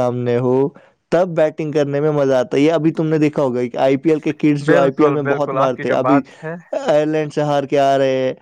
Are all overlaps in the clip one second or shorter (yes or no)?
no